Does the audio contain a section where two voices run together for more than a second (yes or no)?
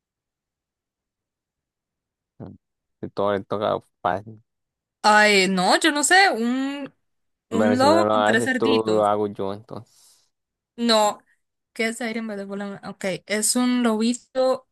yes